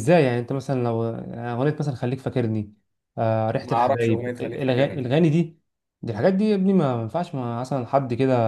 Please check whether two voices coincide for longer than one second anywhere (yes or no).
yes